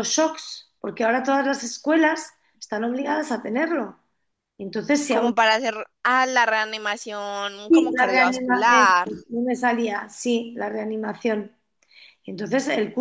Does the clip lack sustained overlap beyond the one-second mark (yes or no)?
no